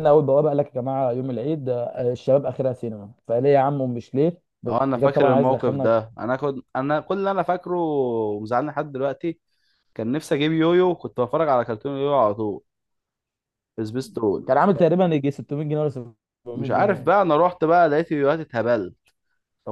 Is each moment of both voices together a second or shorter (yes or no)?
no